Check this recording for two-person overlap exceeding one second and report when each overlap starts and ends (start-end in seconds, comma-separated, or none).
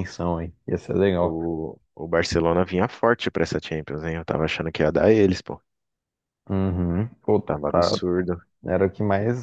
none